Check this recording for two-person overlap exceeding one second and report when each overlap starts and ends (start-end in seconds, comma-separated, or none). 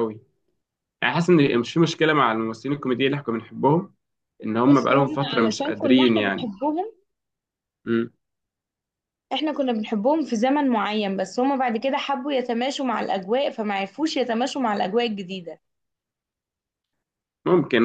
4.6-6.5